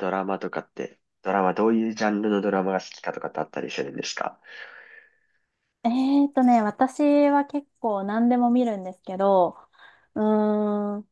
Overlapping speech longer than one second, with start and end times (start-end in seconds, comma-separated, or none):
none